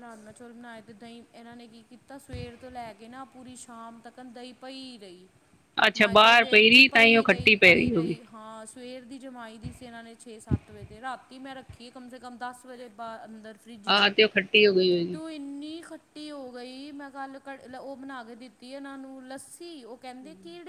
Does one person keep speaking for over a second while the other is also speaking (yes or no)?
yes